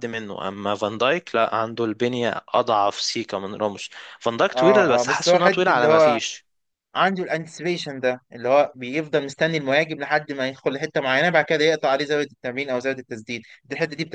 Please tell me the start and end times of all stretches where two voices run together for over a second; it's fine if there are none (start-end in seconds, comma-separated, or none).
4.5-6.2